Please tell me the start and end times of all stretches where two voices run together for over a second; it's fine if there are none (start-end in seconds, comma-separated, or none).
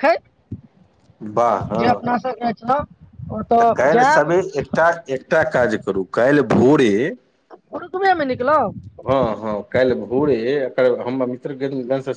none